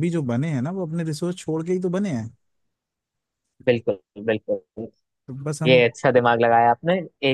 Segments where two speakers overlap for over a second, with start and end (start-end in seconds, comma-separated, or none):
none